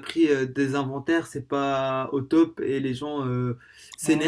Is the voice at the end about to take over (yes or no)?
no